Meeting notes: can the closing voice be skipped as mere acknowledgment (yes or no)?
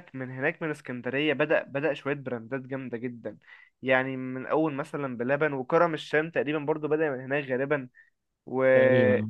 yes